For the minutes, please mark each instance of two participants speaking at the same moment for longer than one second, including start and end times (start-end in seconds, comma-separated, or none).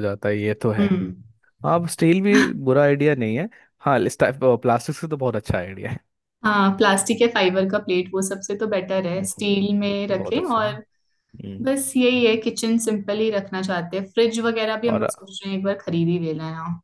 none